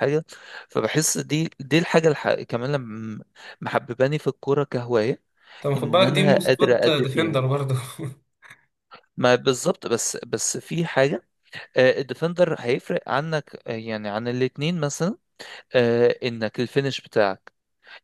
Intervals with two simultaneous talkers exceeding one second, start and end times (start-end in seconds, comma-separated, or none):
5.8-7.4